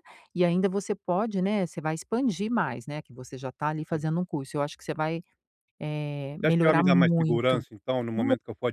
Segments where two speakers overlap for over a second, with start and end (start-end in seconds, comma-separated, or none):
6.4-7.6